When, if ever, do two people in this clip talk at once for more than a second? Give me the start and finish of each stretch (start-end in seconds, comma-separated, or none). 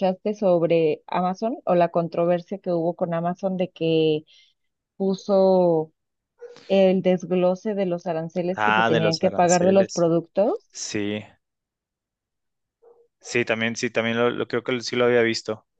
8.6-10.0